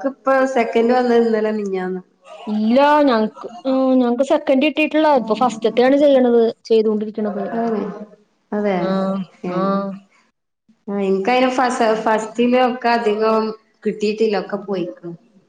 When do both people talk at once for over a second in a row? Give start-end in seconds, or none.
none